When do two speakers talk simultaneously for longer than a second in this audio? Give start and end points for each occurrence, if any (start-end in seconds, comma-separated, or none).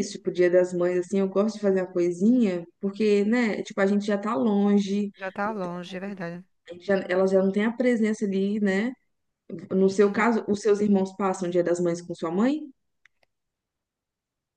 none